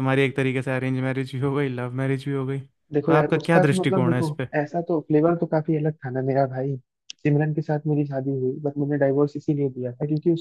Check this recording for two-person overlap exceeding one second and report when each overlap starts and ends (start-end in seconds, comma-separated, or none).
3.0-4.5